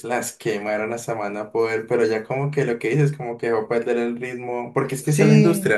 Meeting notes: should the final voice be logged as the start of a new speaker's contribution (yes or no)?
no